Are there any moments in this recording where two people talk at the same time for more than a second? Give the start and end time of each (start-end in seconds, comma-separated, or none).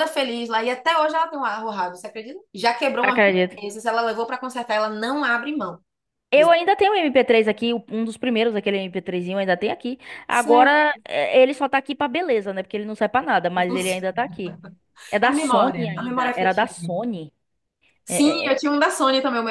15.2-16.7